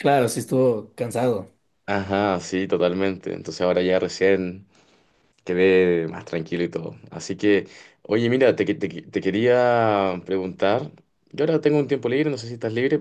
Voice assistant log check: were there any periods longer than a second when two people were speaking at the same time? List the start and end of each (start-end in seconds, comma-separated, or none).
none